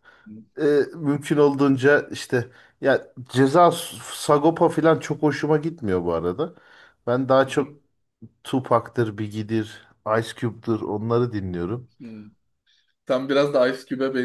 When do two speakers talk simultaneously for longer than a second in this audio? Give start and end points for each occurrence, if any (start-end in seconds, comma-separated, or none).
none